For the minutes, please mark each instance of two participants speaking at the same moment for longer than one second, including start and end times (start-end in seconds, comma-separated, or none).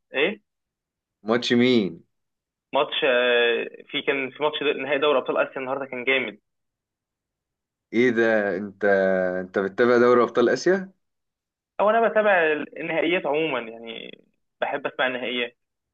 none